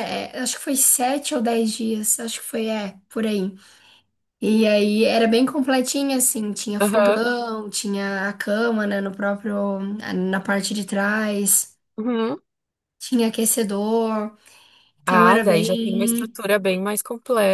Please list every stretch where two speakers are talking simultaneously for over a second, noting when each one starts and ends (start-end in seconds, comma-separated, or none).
15.1-16.3